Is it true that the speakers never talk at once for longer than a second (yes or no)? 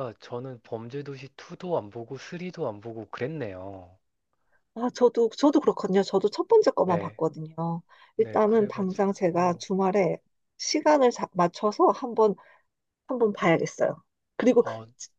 no